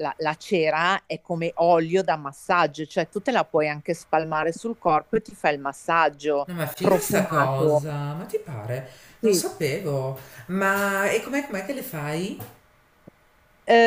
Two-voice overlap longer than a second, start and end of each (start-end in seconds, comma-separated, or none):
6.5-7.9